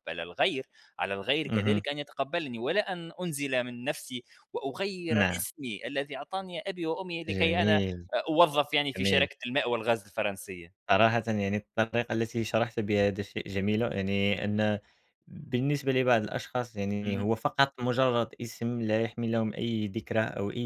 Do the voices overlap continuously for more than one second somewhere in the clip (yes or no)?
no